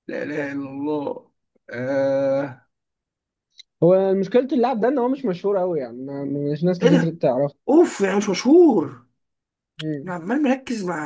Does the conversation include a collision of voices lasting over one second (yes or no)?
no